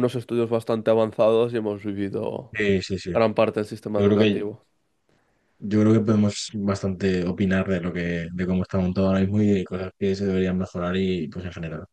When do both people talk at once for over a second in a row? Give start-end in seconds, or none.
none